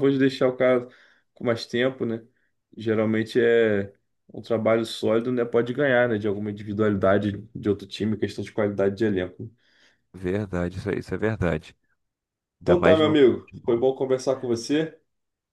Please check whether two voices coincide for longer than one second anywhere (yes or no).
yes